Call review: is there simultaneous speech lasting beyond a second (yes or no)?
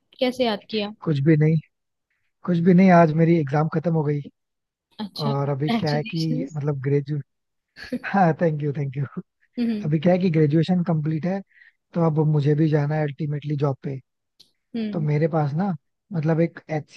yes